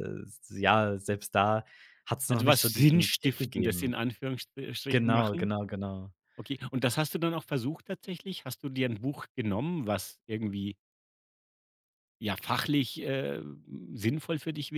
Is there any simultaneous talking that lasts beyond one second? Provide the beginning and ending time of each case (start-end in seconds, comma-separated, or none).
2.3-3.9